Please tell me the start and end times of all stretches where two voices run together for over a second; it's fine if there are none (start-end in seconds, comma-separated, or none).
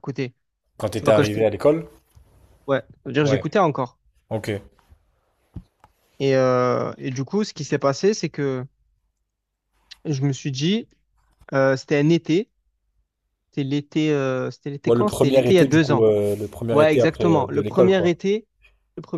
14.8-16.1, 16.7-18.2